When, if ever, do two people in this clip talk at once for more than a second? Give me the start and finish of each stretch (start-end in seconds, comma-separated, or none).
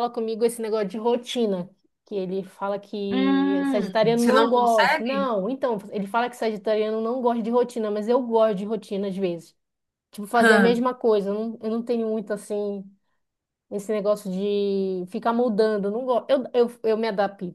3.1-5.3